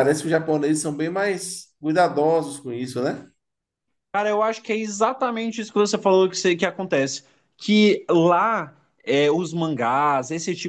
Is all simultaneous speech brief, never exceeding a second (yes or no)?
yes